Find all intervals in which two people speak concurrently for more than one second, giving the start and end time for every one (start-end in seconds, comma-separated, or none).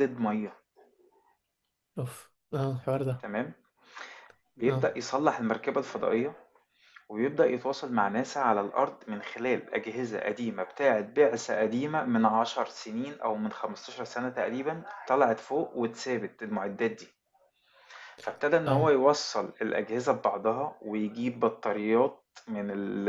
none